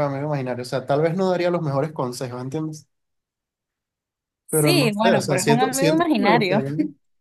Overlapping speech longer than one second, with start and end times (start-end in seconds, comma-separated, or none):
4.5-6.6